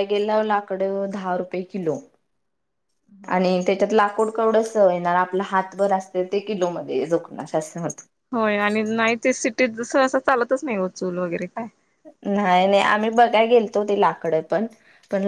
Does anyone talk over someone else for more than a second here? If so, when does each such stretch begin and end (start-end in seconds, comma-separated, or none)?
none